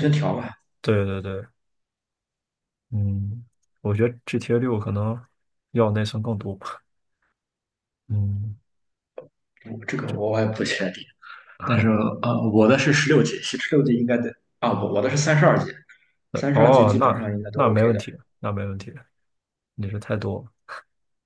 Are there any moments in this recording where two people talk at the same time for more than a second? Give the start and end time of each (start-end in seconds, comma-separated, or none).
16.4-18.0